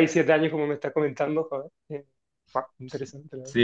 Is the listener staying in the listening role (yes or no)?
no